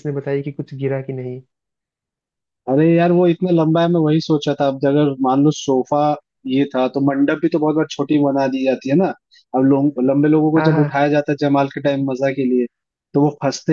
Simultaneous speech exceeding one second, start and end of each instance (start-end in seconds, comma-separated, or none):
none